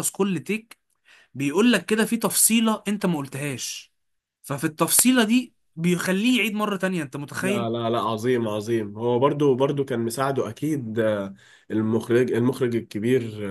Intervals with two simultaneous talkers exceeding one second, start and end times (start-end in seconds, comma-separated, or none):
none